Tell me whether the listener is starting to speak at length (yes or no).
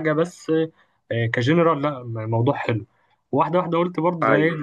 no